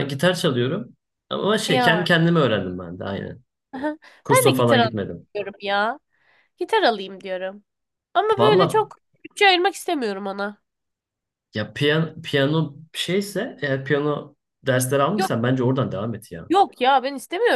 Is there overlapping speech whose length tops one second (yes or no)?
no